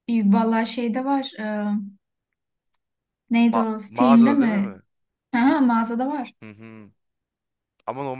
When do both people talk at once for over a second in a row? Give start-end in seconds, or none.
3.5-4.8